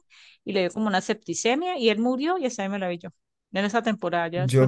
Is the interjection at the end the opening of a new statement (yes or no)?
yes